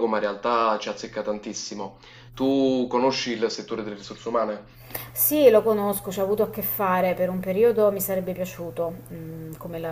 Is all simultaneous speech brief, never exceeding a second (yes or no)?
yes